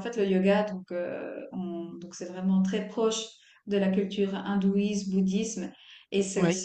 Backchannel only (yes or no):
yes